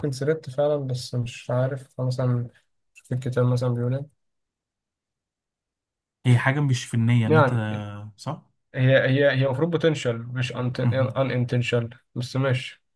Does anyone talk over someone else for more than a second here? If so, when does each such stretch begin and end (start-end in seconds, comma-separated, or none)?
none